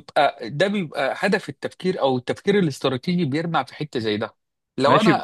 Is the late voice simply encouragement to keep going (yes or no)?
no